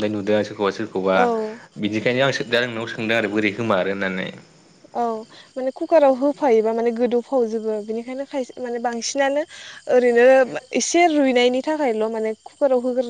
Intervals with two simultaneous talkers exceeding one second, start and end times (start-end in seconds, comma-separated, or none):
none